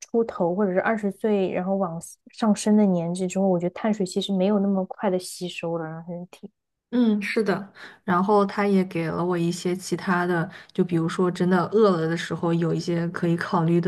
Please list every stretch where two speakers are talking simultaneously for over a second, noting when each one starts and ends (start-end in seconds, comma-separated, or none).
none